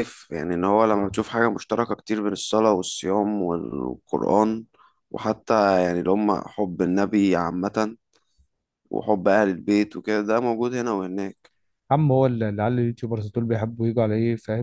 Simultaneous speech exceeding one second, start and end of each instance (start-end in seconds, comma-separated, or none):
none